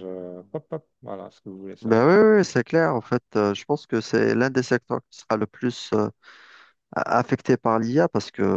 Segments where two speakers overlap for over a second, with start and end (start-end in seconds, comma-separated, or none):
none